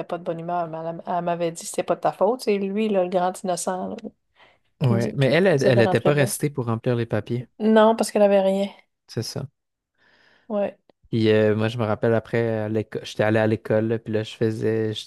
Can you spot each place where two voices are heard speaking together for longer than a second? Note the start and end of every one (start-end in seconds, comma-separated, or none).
4.8-6.3